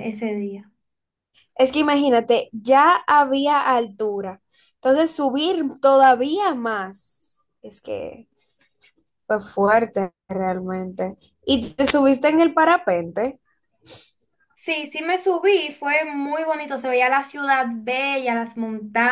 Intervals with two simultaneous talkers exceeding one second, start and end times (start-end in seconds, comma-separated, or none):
none